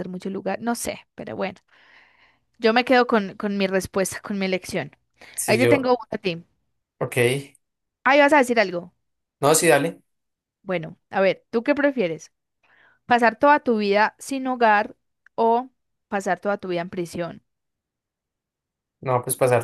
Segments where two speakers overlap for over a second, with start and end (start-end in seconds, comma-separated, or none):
none